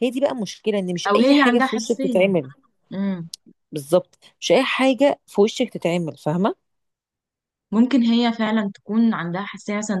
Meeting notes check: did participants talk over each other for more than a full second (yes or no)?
yes